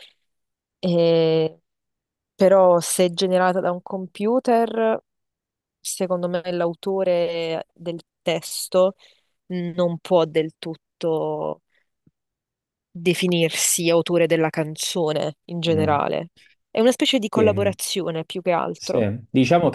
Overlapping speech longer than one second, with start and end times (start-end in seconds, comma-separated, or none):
none